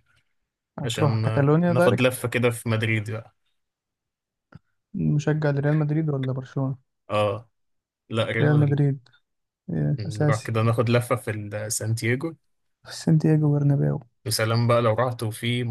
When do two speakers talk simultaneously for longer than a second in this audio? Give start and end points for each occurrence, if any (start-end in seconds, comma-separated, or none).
0.8-2.3